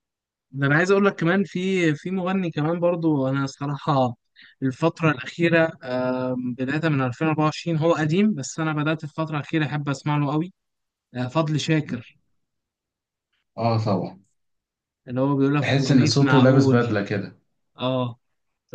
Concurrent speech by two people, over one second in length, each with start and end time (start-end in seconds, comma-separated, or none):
15.6-16.9